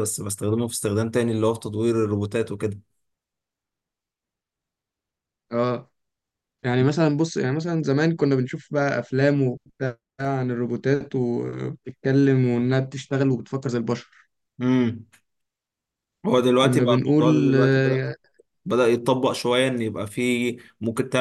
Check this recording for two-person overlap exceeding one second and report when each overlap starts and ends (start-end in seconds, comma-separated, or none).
16.6-17.8